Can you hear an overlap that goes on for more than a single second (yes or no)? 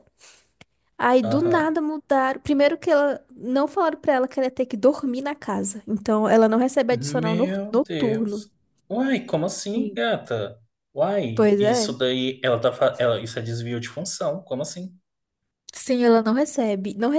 yes